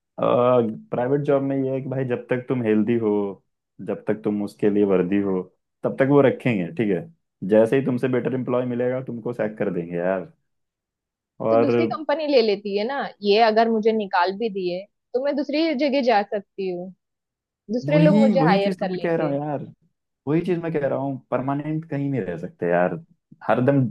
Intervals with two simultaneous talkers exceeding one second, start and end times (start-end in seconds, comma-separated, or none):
17.9-19.3